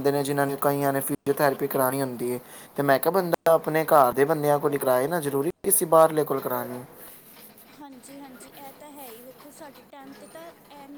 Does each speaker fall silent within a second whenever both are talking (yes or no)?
yes